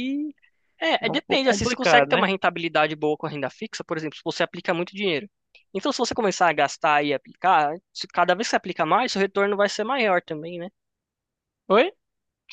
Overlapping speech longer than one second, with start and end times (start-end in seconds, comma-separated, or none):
1.0-2.3